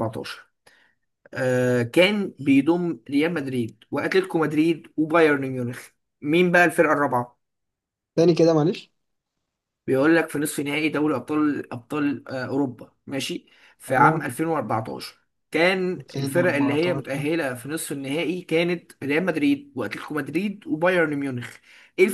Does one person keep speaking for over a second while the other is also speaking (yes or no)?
yes